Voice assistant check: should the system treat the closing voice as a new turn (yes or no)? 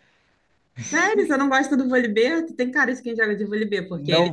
no